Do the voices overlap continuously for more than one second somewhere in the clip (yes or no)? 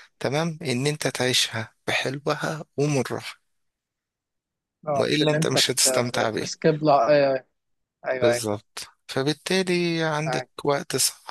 yes